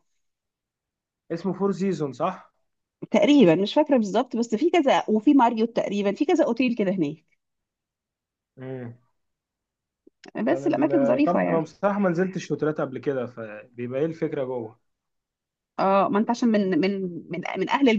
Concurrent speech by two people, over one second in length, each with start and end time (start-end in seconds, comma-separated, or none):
10.5-11.7